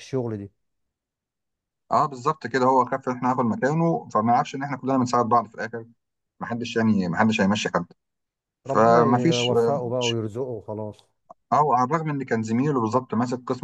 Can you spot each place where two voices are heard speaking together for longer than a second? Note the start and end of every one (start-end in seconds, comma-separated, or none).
8.7-10.2